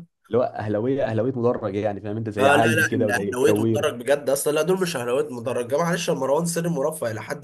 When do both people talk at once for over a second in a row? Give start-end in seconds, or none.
2.4-3.9